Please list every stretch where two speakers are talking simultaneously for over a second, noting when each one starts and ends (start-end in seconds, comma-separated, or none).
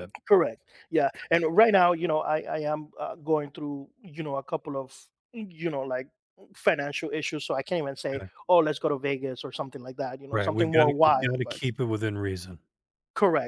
10.3-11.6